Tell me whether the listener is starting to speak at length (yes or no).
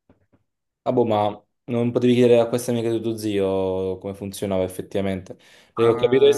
no